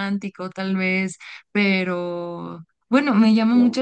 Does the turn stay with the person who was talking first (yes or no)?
yes